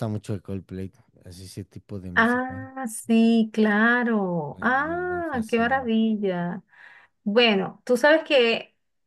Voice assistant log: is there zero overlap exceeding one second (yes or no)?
no